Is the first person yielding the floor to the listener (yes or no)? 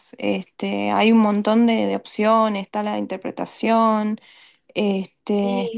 no